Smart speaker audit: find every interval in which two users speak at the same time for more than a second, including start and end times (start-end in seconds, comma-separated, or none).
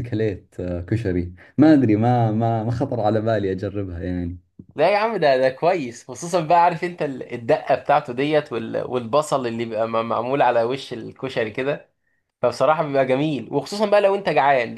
none